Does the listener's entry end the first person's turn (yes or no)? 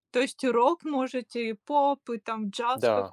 yes